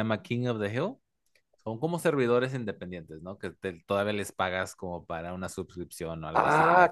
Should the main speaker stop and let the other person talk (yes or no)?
yes